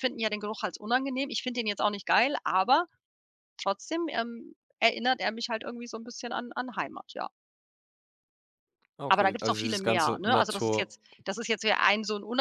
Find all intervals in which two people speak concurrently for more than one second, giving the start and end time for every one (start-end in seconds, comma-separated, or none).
9.1-10.9